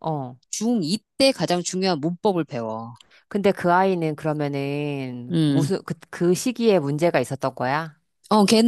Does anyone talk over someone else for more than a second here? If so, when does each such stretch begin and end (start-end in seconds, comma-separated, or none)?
none